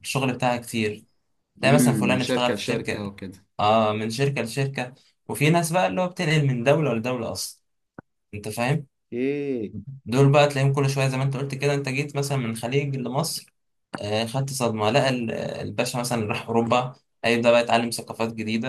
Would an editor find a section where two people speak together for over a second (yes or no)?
yes